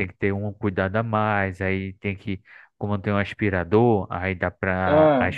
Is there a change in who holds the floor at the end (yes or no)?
no